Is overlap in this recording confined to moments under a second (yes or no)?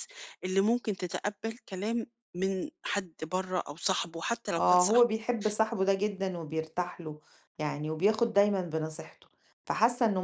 yes